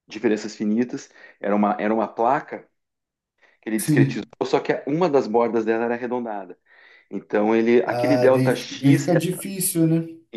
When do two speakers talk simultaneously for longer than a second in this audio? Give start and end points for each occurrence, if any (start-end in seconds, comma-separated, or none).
7.8-9.1